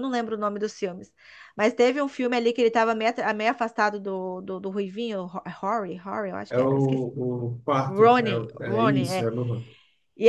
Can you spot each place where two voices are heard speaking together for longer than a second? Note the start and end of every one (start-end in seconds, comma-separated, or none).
7.9-9.3